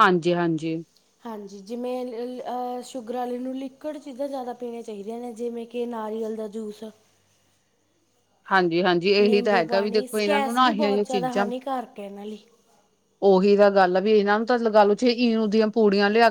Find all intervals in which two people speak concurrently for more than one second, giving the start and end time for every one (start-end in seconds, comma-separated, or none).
9.2-11.5